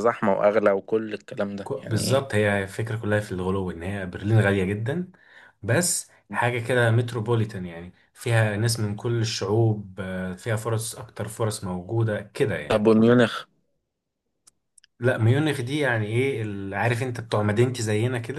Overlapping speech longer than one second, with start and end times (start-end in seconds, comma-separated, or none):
none